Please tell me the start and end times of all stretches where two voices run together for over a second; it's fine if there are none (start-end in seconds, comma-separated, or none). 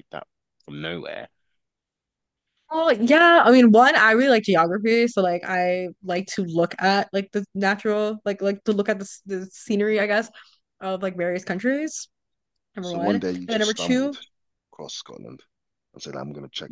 12.8-14.2